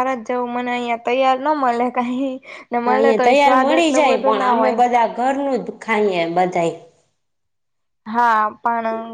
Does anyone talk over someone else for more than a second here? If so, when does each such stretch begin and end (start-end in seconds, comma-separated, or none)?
2.9-4.8